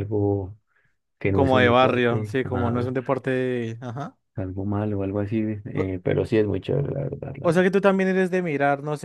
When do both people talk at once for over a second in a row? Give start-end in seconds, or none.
1.3-2.9